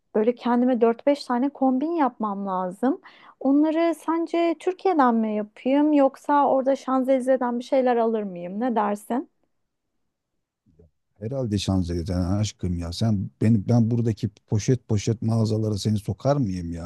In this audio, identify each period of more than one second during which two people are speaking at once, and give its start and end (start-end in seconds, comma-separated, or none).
none